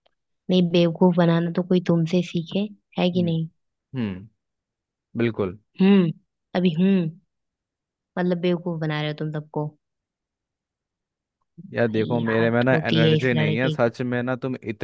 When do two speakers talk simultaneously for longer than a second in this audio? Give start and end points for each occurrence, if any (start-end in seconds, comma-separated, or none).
11.9-13.9